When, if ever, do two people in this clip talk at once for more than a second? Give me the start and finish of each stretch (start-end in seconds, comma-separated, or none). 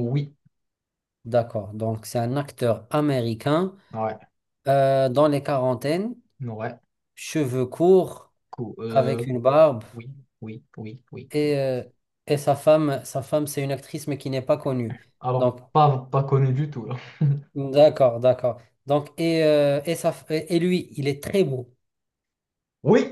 none